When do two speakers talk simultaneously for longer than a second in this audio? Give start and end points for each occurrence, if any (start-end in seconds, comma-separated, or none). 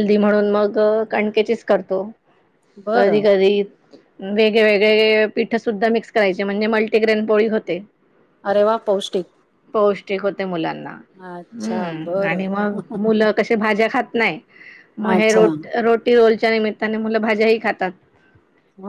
11.2-12.4